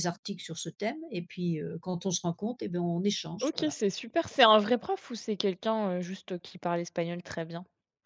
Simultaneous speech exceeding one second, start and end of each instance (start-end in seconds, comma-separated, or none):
none